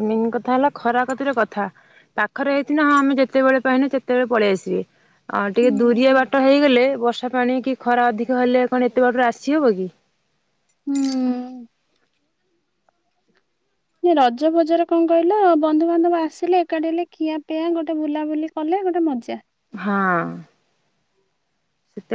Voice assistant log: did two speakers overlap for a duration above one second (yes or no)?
no